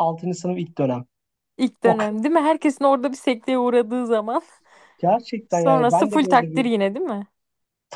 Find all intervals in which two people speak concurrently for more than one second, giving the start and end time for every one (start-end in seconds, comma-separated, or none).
5.5-6.7